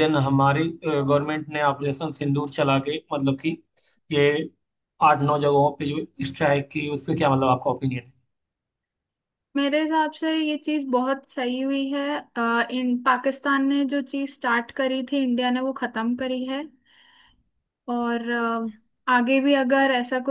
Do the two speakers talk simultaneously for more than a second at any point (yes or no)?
no